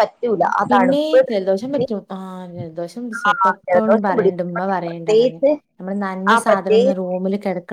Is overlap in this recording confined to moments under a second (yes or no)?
no